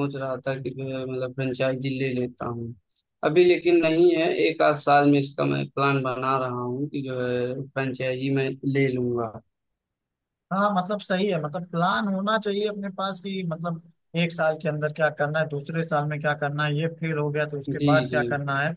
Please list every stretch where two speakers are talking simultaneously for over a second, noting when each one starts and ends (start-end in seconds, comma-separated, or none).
none